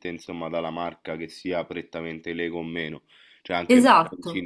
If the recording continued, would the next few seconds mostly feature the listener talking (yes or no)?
no